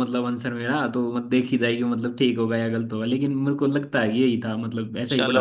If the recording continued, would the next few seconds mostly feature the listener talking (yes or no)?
yes